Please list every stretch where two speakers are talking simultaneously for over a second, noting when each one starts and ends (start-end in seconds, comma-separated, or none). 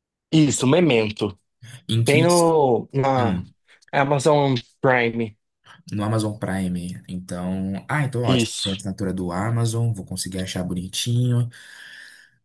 none